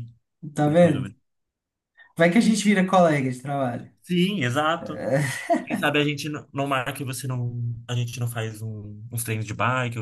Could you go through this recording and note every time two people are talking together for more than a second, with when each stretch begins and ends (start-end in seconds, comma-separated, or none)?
none